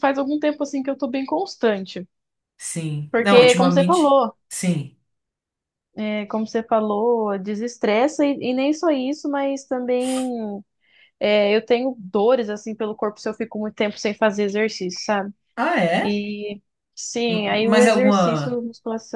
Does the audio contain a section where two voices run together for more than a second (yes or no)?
yes